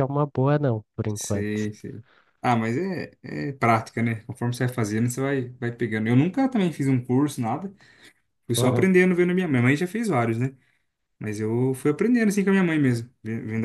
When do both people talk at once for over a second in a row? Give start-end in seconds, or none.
none